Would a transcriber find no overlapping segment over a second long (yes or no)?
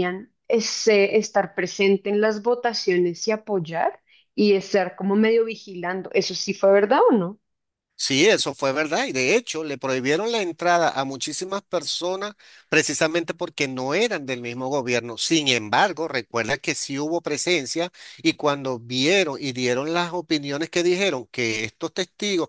yes